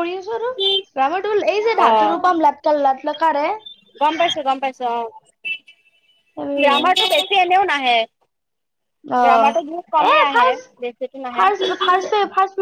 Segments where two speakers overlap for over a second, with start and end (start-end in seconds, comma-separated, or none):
9.3-10.6